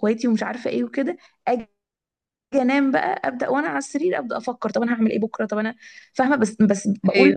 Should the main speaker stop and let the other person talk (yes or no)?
no